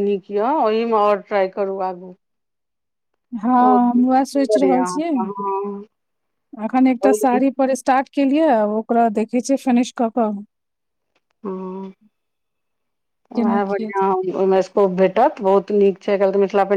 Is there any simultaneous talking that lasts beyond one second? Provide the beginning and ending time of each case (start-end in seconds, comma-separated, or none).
3.6-5.1